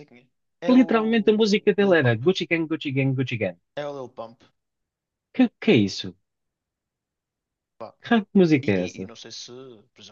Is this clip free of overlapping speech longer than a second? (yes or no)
no